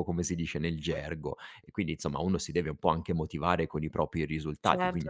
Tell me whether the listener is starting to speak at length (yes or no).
no